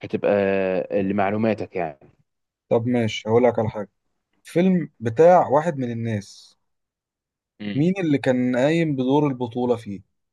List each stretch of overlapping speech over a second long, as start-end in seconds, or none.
none